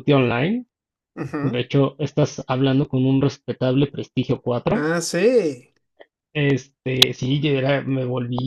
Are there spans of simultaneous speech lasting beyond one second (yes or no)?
no